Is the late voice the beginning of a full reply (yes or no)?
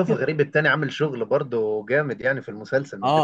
yes